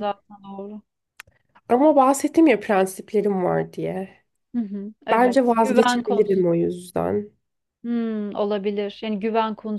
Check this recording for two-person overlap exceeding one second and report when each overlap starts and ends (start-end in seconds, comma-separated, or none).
5.1-6.4